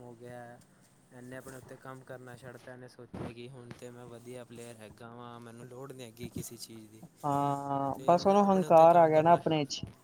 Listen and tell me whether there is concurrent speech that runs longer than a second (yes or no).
yes